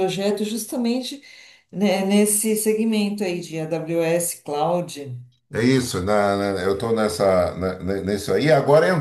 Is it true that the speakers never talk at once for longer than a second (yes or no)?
yes